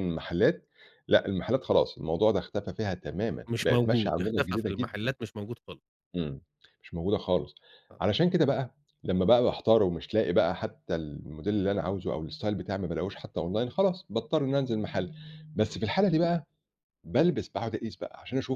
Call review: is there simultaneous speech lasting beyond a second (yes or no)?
yes